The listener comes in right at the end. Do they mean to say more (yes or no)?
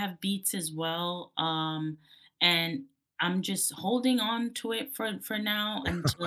no